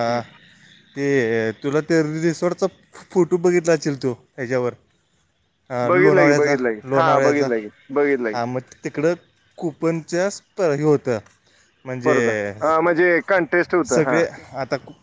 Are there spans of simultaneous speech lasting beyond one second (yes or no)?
yes